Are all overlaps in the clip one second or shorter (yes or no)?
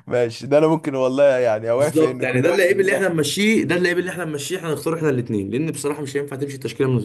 no